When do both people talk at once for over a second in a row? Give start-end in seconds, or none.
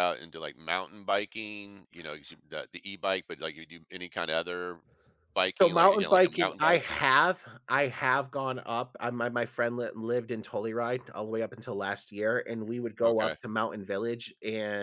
5.6-7.0